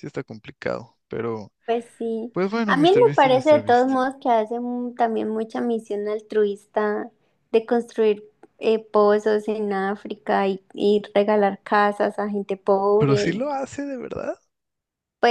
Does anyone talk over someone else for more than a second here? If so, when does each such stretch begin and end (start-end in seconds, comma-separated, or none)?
2.3-4.0